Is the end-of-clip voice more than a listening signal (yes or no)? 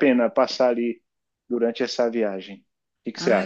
yes